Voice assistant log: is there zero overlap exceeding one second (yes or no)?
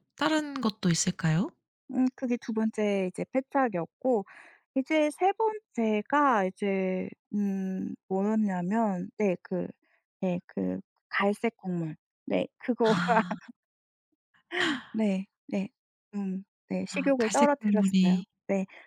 no